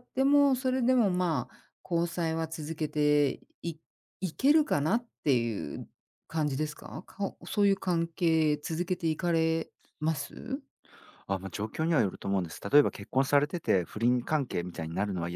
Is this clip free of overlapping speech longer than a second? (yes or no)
yes